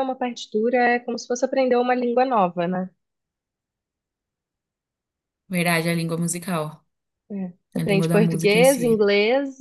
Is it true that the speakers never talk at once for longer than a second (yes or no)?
no